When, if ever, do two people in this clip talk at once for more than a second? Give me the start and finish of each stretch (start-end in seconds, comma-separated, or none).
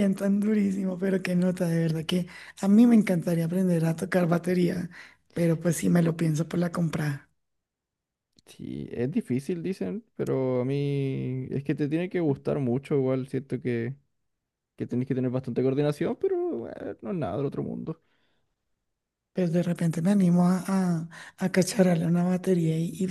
none